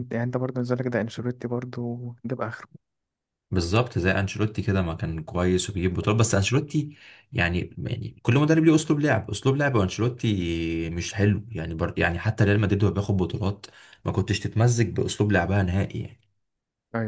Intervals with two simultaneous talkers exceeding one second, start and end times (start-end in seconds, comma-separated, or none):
none